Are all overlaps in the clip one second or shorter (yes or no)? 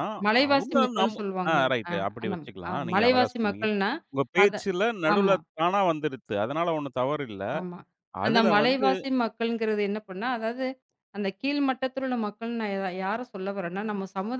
no